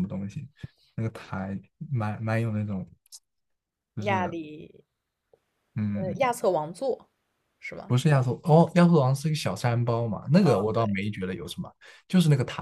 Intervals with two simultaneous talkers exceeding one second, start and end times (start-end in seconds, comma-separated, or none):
none